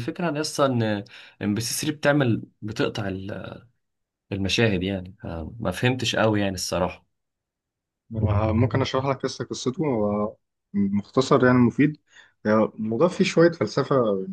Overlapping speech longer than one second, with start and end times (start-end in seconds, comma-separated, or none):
none